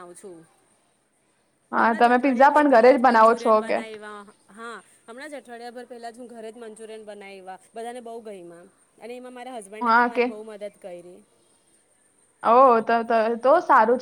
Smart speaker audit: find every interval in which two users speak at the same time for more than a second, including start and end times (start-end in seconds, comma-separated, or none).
1.8-3.8